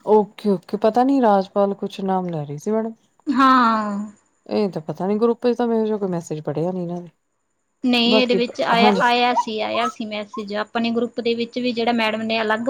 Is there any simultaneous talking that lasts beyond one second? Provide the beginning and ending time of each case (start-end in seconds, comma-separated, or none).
none